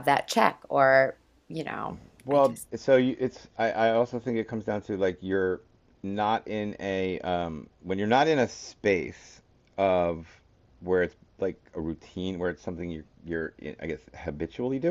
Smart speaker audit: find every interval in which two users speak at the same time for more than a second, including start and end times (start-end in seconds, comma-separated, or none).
none